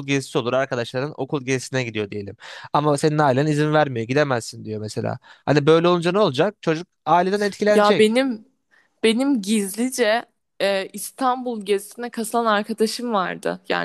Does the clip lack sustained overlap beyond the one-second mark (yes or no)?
yes